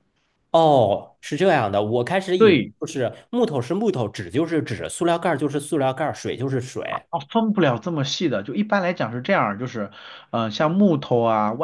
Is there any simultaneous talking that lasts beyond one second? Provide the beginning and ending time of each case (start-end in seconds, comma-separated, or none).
none